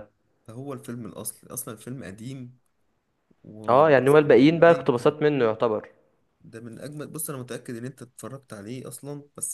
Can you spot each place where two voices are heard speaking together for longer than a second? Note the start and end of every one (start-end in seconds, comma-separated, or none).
3.7-5.2